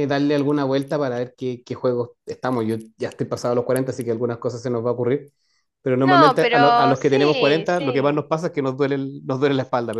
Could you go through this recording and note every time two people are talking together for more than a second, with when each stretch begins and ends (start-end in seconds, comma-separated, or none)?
6.0-8.3